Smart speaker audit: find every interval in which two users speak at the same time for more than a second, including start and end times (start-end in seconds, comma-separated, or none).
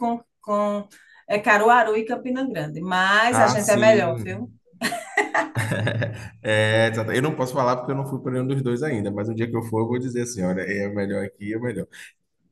3.3-4.5